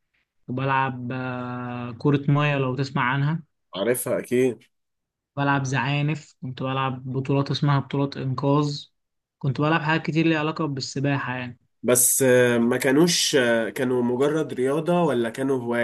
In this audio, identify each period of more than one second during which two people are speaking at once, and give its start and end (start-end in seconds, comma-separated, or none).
none